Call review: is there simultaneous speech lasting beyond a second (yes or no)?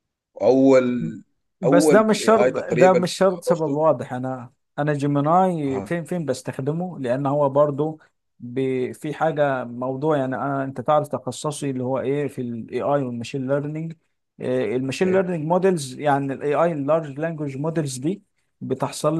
yes